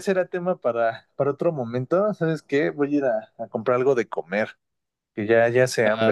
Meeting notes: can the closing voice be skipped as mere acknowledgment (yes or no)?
no